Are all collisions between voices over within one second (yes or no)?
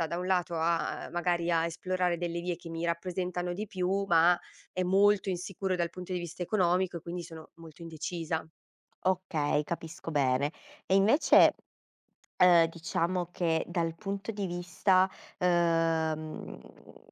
yes